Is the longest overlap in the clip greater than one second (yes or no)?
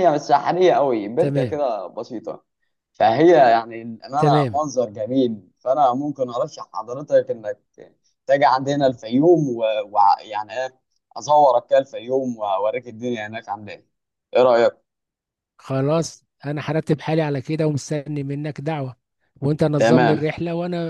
no